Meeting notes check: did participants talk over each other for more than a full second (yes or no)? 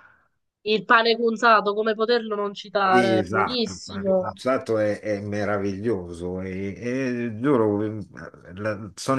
yes